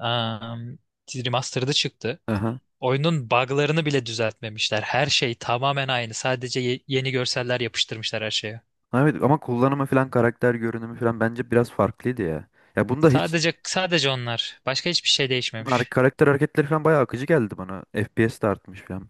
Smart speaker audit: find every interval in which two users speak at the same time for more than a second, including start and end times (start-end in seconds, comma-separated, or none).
none